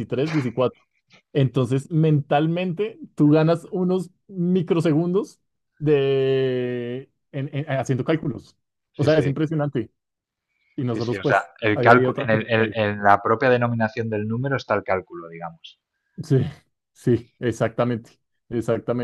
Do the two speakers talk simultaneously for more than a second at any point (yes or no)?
yes